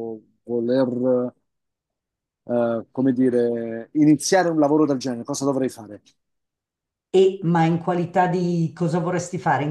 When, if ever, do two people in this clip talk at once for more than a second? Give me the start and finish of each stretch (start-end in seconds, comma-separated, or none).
none